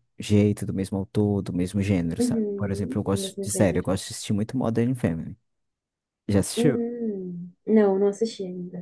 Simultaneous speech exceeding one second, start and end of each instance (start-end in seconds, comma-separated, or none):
2.2-3.9